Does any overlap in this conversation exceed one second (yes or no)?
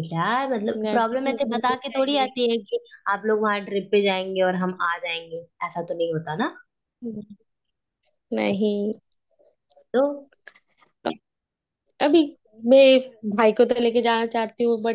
yes